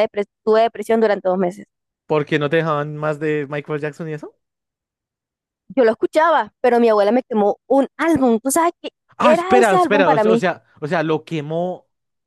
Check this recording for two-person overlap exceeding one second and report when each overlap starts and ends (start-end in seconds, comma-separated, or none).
9.2-10.4